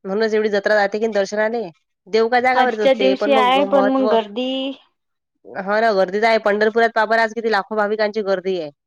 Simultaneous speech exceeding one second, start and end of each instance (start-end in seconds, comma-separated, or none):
2.6-4.1